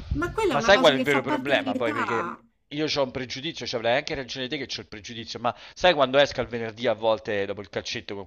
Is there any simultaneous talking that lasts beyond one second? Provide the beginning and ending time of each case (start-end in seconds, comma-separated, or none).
0.5-2.3